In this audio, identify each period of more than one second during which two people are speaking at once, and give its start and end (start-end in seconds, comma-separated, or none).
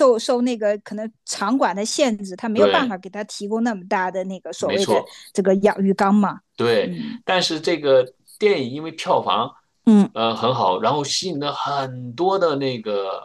none